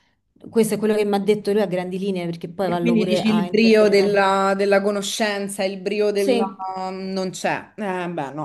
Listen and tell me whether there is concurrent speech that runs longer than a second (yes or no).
yes